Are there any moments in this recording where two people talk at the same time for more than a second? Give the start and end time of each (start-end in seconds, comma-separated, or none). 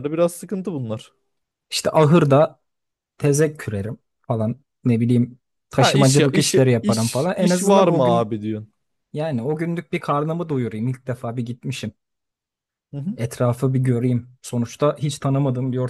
5.8-8.3